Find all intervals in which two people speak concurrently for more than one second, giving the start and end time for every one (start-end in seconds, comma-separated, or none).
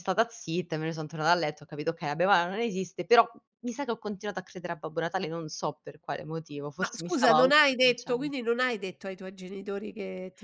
6.8-8.3